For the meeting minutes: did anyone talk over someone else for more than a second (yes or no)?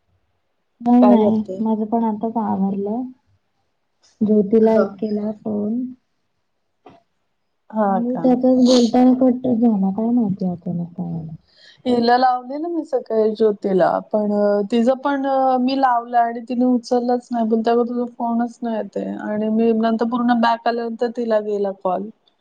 no